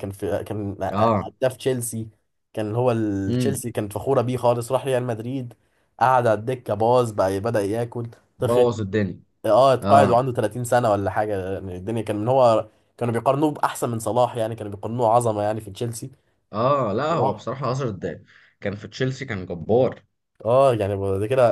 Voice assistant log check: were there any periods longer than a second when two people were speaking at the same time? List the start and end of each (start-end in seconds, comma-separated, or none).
none